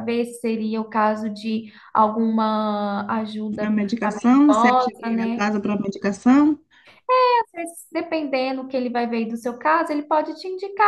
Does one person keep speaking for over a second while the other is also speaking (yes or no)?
yes